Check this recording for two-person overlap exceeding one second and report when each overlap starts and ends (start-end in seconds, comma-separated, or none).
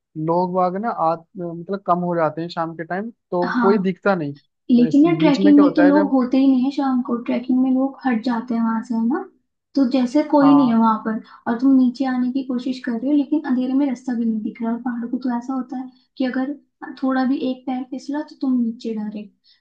4.7-6.1